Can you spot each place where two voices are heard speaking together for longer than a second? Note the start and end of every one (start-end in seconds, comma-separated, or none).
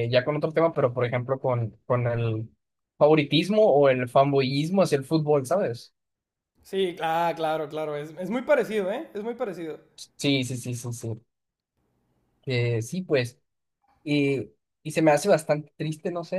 none